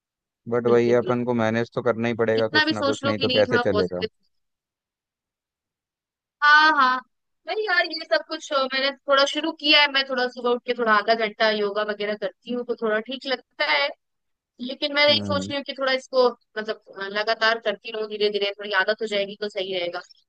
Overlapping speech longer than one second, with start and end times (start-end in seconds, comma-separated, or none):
2.3-4.0